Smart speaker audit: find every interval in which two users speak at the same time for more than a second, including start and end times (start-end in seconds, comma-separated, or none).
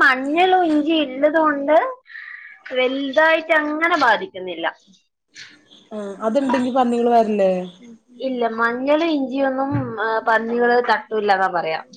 none